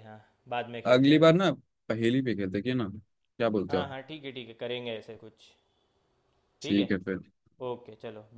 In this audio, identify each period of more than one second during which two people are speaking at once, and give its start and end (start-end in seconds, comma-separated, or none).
none